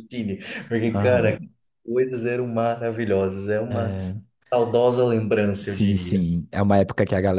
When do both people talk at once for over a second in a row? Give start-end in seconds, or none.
none